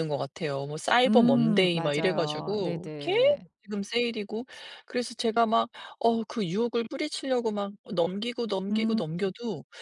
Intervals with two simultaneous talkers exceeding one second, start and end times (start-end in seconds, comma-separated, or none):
1.1-3.5